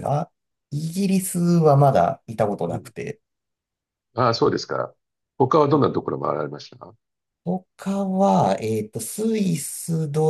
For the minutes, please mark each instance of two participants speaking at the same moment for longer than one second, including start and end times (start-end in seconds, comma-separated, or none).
none